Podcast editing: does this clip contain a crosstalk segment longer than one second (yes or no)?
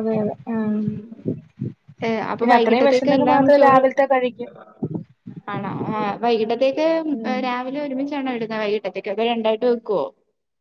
yes